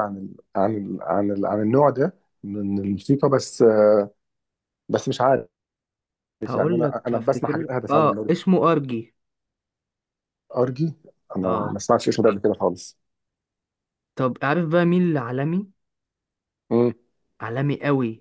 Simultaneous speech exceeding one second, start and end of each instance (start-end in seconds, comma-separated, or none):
6.6-8.4